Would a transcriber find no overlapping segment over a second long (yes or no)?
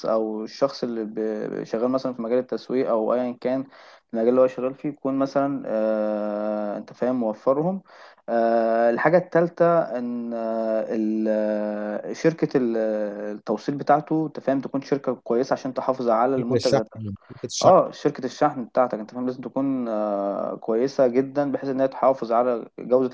yes